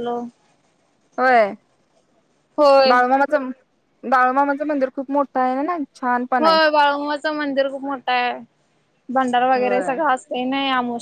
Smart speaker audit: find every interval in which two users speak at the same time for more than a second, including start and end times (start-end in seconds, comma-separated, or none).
none